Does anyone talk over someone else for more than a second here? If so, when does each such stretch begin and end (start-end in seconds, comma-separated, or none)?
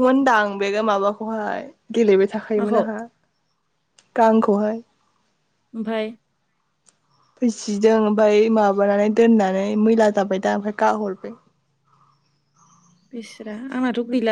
none